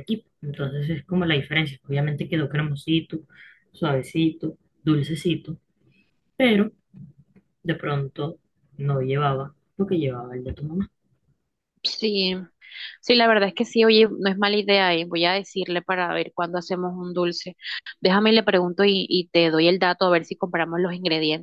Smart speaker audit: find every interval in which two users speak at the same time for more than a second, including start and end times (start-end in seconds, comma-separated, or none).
none